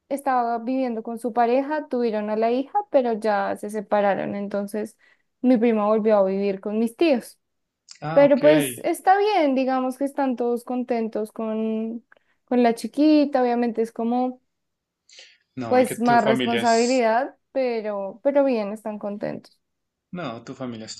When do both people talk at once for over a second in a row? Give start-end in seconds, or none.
15.7-17.0